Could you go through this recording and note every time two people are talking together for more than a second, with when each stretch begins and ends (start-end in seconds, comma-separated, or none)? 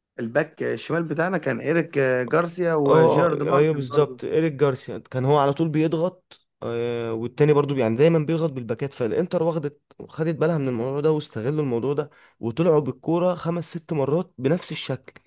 2.9-4.2